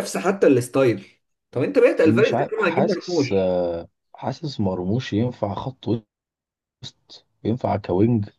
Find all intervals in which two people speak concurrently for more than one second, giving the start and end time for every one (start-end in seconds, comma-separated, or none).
2.0-3.3